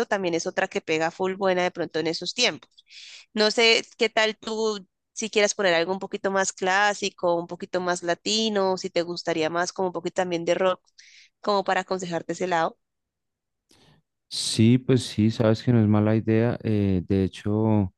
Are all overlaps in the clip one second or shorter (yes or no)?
yes